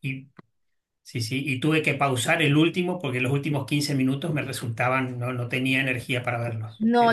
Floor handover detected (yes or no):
yes